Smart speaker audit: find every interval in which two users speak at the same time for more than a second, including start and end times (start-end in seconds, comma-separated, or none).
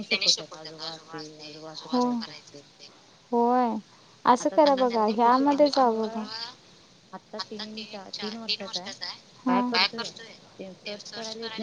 4.4-6.2